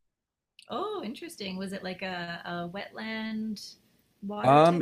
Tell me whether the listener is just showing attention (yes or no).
no